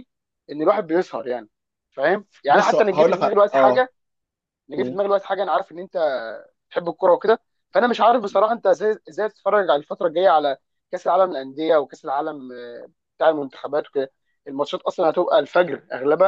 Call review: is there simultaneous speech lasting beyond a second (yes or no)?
yes